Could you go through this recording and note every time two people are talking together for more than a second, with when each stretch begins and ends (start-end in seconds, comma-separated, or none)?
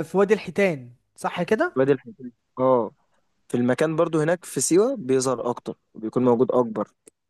none